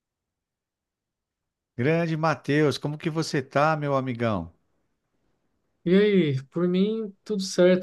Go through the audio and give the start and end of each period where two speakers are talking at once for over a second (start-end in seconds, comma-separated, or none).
none